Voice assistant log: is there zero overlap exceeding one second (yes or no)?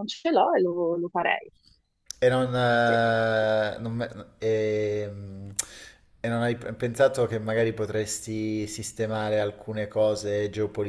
yes